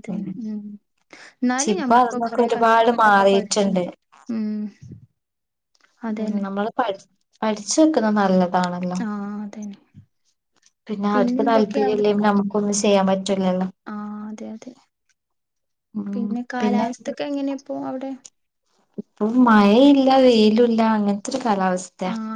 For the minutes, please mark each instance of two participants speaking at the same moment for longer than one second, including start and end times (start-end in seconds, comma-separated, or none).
1.6-3.8